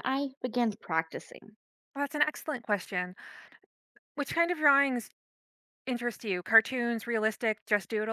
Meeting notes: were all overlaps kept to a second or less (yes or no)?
yes